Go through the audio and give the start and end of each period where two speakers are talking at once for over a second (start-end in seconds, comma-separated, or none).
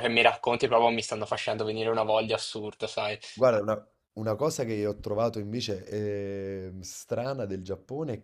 none